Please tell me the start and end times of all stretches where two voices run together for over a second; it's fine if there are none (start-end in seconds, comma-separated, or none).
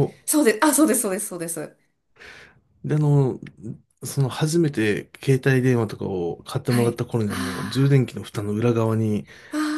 6.7-8.0